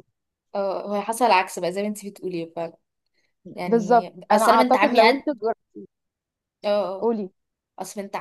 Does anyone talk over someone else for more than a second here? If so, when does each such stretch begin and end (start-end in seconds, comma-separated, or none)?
3.7-5.2